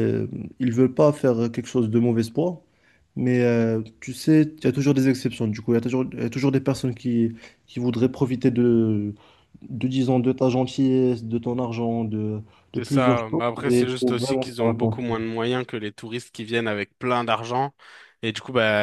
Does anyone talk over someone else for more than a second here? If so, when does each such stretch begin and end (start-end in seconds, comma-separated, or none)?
12.7-15.1